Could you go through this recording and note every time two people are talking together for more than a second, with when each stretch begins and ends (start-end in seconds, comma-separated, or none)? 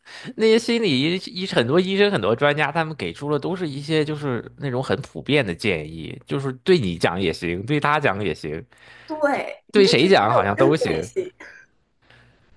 9.7-11.1